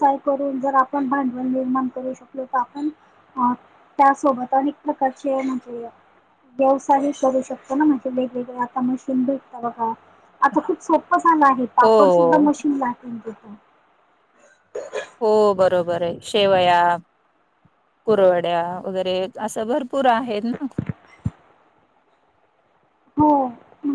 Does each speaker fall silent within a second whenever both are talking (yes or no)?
yes